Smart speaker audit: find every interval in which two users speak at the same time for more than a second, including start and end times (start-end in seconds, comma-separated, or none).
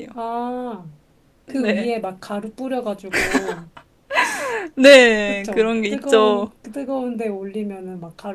5.3-6.5